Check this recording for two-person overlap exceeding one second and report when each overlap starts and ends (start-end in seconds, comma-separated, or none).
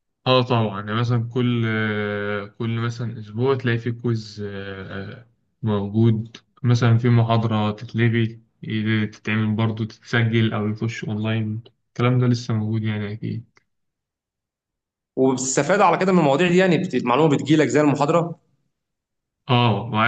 none